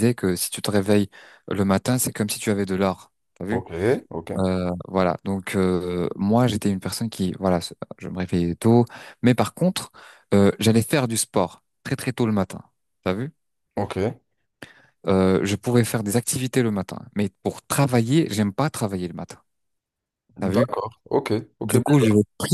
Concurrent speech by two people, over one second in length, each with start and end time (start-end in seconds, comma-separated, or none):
none